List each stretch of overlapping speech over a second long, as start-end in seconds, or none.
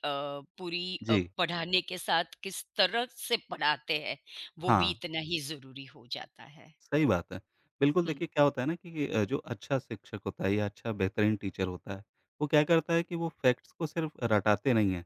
none